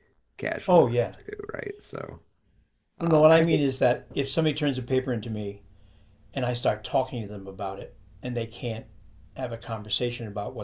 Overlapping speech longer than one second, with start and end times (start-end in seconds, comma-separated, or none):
none